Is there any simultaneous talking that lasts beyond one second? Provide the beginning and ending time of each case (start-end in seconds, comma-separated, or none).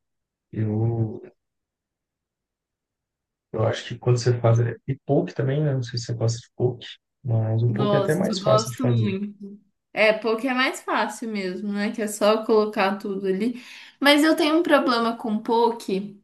7.7-9.1